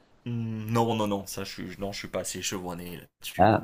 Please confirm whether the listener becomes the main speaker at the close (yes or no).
yes